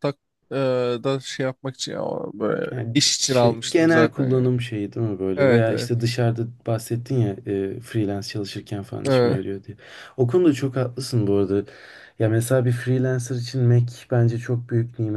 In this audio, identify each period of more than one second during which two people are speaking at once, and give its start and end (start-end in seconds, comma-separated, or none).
2.7-4.5